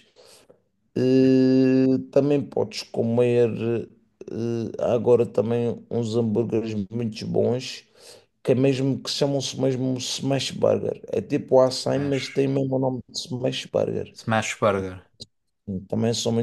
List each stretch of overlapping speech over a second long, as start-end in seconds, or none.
none